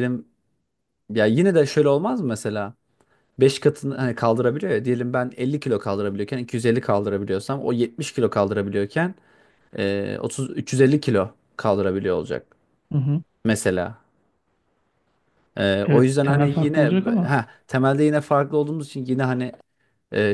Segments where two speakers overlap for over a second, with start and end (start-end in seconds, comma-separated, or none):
15.8-17.4